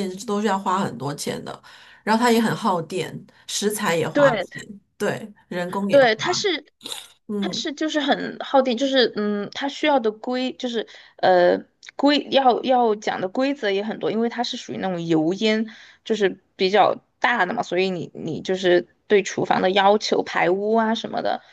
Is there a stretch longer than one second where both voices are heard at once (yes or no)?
no